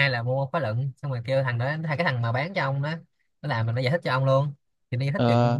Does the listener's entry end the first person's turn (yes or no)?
no